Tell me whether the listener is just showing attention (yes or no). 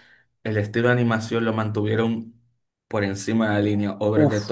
no